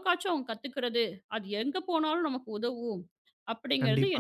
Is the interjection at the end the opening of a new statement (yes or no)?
yes